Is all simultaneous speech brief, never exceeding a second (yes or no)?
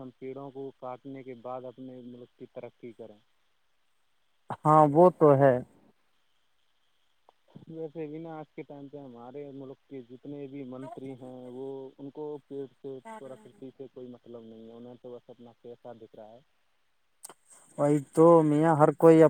yes